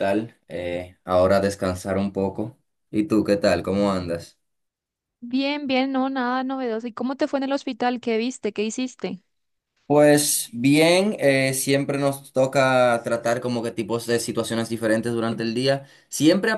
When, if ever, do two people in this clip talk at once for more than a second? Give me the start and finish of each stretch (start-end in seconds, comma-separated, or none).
none